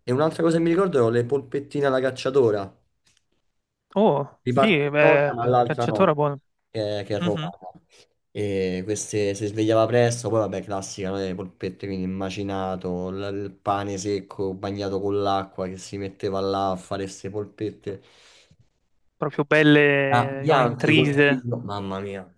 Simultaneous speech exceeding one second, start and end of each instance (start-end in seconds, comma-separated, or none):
4.4-6.2, 20.1-21.4